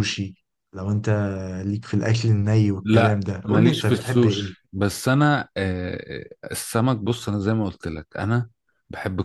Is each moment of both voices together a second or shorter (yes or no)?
no